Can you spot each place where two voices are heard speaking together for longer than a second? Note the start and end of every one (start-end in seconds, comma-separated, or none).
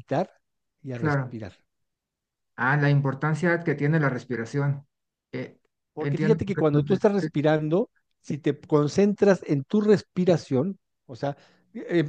6.0-7.3